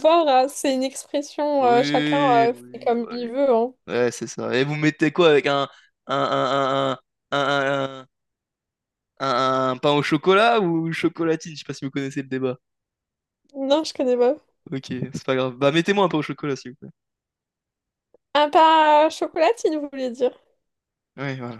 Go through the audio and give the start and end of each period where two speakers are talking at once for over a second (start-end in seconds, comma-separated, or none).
1.6-3.3